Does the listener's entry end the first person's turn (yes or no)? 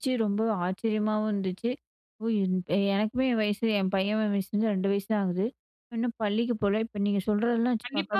yes